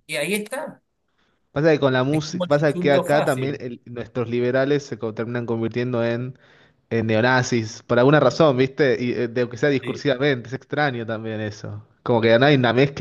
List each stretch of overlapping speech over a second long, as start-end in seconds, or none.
2.1-3.6